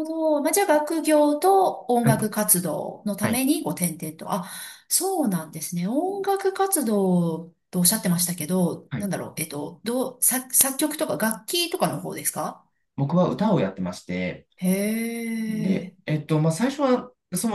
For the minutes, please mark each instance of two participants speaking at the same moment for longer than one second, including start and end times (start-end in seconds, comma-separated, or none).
none